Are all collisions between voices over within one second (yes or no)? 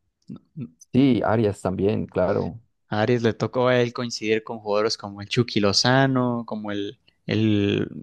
yes